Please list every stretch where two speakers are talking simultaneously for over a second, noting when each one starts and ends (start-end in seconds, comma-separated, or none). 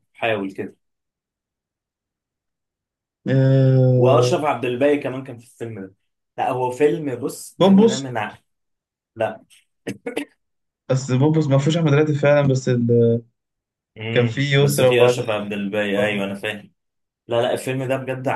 14.1-16.3